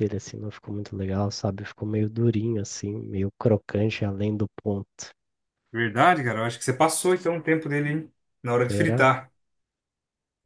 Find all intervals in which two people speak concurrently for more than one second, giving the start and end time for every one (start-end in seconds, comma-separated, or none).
none